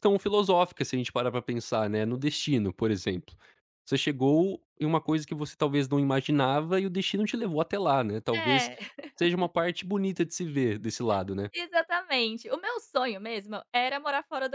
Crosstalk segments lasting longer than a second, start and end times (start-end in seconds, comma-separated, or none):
none